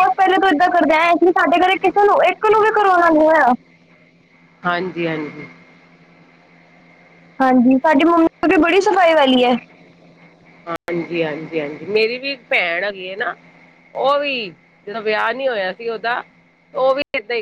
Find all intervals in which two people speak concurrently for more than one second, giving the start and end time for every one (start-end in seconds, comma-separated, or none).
none